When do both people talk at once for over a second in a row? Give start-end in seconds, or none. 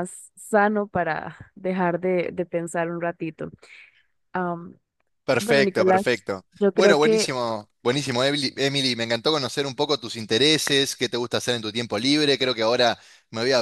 5.4-7.4